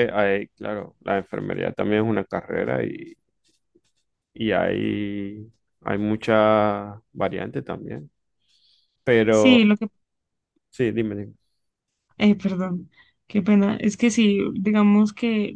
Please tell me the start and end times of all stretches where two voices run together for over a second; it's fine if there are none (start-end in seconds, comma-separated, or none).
none